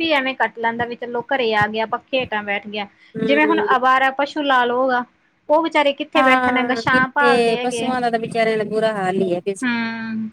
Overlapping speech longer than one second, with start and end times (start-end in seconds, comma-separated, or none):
6.2-7.9